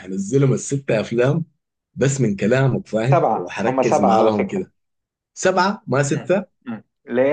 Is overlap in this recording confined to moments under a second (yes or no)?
no